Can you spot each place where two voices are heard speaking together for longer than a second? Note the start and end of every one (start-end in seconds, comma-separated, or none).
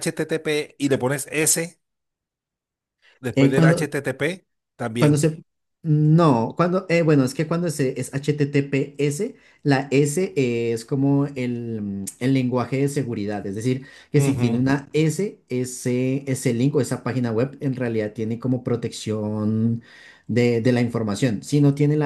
none